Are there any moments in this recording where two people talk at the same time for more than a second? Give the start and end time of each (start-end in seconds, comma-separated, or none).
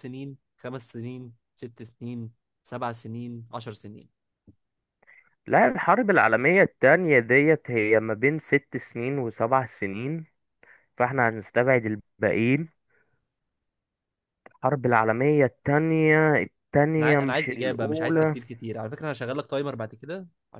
17.0-18.4